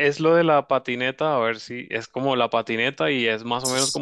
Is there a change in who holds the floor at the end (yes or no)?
no